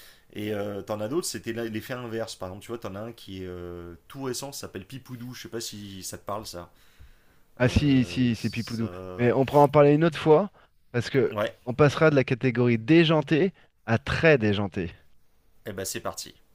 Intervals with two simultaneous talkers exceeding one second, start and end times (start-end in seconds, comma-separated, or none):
7.6-9.3